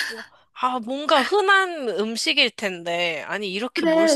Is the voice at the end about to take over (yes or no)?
yes